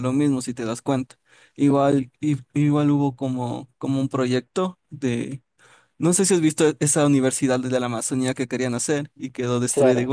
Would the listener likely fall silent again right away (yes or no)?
yes